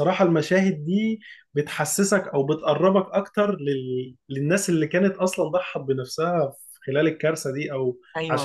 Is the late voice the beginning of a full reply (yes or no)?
yes